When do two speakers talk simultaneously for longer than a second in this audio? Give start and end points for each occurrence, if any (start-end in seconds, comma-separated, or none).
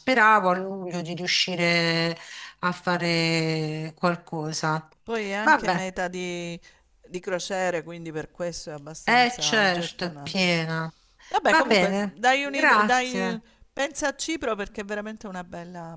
9.0-10.5, 11.4-13.4